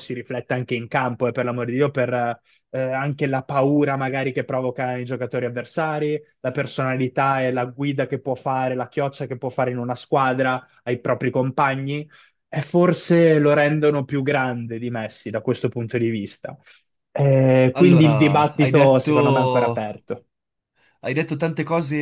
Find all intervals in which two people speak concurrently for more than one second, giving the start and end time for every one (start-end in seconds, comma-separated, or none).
17.7-19.8